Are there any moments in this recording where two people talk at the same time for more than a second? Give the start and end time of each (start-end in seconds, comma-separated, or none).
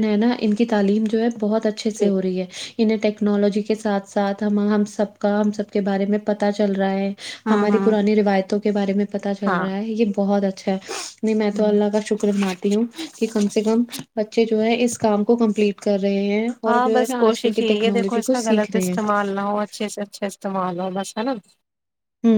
16.7-18.9